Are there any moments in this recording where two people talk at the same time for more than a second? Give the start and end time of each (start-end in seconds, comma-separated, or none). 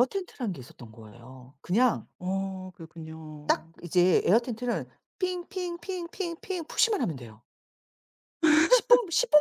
none